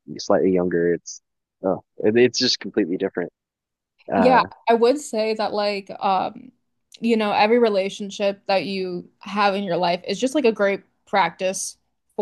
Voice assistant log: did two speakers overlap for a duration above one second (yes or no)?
no